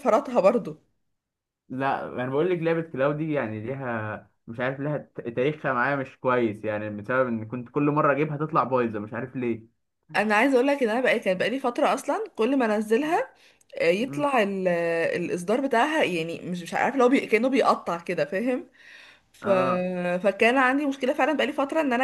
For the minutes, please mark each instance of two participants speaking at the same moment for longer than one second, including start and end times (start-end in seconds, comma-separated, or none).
none